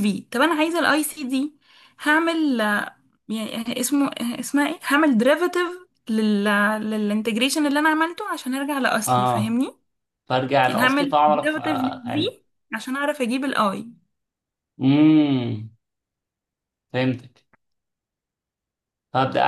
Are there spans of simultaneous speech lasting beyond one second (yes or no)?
yes